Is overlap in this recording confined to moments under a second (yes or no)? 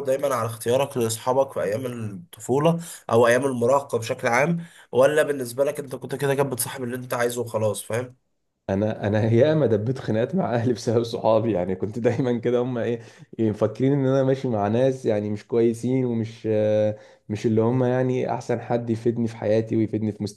yes